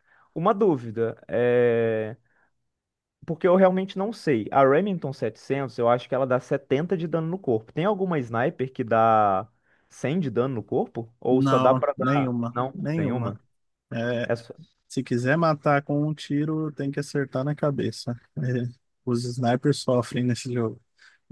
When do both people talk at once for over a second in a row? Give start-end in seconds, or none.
11.3-13.3